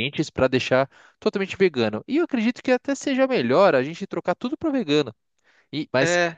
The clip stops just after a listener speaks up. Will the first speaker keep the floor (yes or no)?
yes